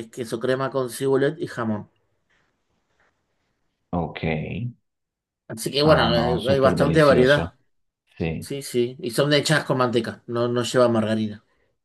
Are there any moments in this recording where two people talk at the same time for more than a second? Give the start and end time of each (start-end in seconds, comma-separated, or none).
5.8-7.5